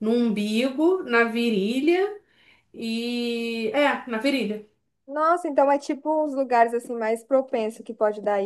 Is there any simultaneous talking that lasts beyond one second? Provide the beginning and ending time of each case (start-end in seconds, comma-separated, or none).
none